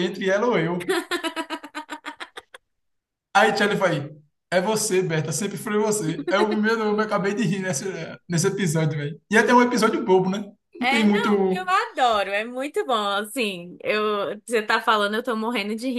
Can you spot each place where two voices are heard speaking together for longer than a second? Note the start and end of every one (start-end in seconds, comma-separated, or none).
none